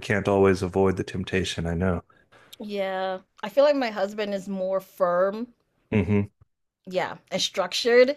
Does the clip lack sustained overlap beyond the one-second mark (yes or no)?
yes